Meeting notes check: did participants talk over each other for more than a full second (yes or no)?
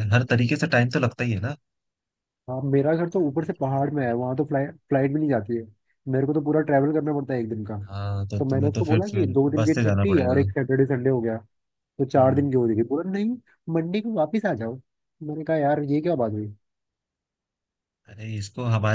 yes